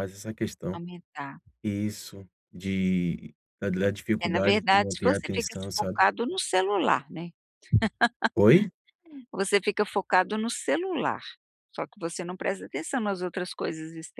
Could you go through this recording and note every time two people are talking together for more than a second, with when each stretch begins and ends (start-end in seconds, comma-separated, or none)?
4.2-6.0